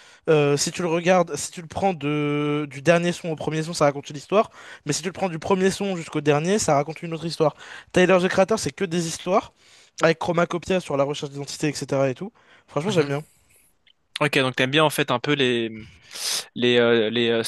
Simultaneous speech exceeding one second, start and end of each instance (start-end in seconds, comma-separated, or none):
none